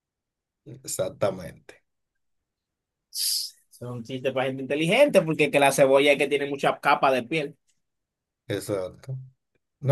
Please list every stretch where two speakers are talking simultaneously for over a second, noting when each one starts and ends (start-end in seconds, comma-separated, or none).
none